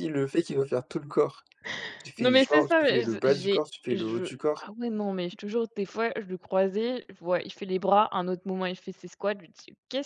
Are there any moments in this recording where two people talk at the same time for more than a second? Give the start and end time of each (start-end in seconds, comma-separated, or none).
2.2-4.7